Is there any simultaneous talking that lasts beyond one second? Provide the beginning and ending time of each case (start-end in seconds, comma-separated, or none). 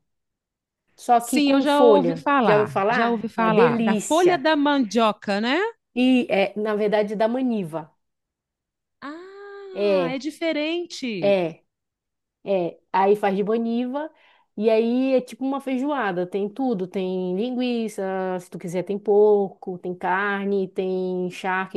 1.2-4.5